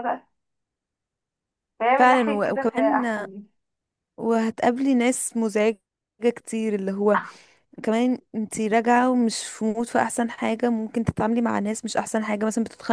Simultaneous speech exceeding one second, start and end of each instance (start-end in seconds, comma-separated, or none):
2.0-3.3